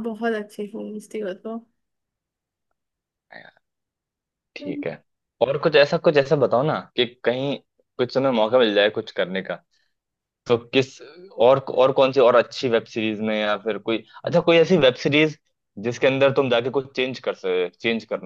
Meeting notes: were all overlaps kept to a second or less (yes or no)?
yes